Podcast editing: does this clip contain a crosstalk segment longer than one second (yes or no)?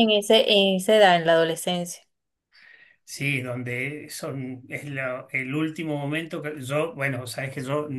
no